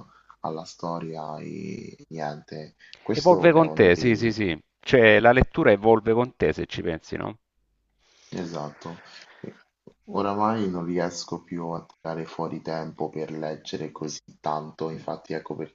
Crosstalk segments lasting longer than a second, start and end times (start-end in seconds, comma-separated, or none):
3.1-4.3